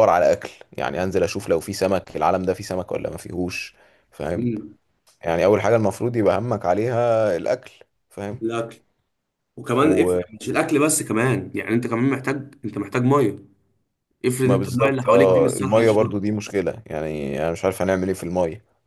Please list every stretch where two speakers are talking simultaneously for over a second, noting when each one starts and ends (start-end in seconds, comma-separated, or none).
14.4-16.1